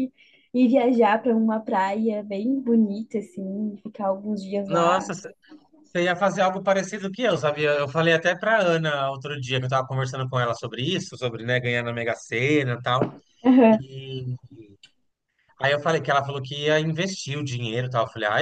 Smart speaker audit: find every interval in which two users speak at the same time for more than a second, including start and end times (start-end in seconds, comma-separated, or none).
none